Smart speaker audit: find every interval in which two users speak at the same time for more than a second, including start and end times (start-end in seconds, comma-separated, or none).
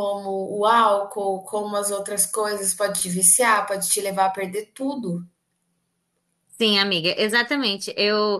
none